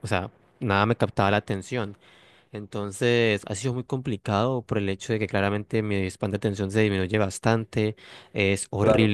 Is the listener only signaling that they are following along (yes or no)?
yes